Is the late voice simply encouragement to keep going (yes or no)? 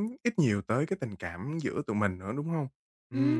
no